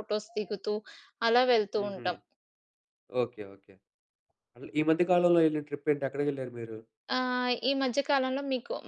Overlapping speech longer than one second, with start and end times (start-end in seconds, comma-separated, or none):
none